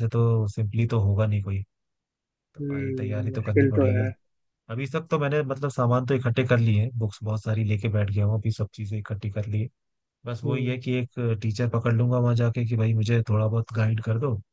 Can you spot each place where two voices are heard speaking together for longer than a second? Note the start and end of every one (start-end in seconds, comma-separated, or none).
2.6-4.1